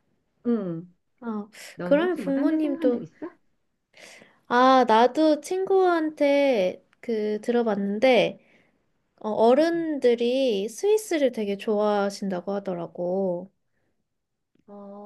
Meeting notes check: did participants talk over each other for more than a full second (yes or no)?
yes